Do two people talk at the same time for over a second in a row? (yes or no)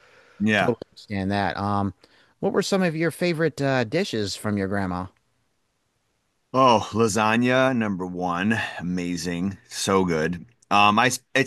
no